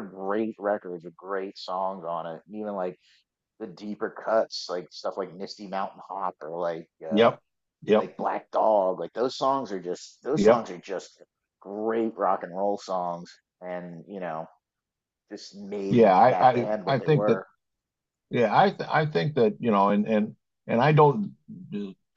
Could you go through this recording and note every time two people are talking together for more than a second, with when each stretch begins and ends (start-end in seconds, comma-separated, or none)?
15.9-17.4